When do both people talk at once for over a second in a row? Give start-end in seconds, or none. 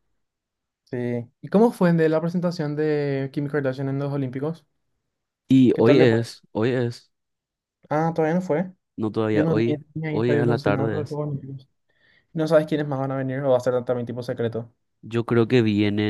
9.3-11.2